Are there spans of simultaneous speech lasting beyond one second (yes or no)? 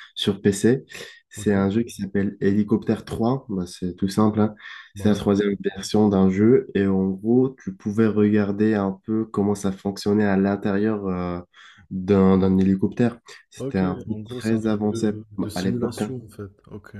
yes